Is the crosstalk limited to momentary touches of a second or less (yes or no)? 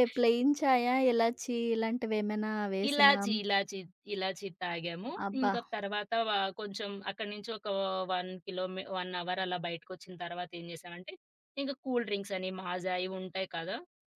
yes